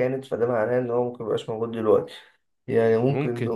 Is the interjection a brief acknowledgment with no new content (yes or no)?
yes